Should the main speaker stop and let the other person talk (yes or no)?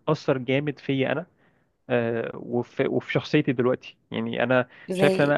yes